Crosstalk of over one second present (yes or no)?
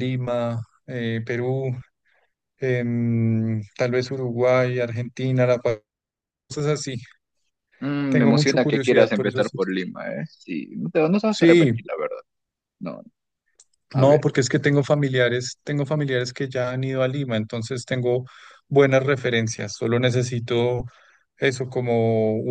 yes